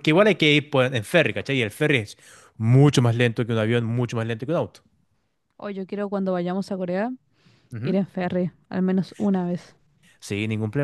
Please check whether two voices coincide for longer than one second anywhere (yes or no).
no